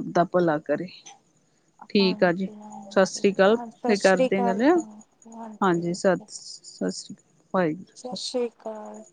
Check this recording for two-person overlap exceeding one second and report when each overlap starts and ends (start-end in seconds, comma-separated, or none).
3.3-4.6